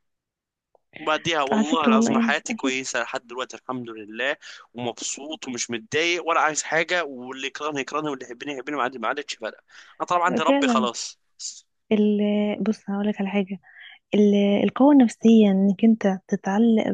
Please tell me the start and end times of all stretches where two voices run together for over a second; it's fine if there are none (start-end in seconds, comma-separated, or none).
1.5-2.8